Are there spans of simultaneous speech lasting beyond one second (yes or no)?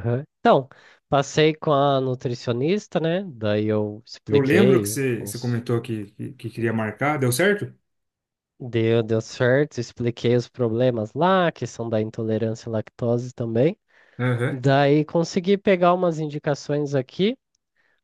yes